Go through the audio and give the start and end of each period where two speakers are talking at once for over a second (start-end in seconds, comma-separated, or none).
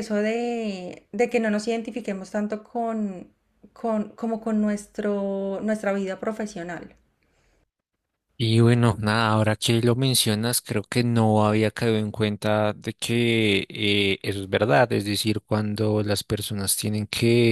none